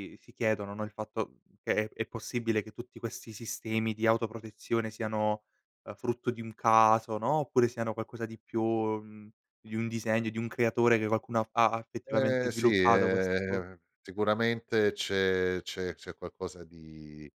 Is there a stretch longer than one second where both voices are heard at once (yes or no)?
yes